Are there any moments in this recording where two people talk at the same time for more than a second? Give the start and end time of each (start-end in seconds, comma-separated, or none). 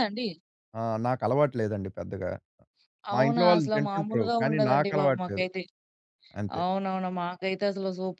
3.1-5.5